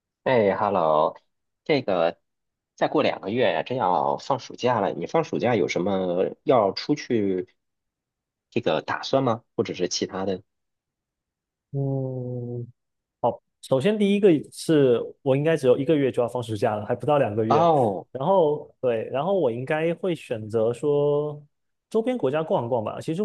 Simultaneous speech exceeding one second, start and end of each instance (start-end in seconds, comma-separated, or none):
none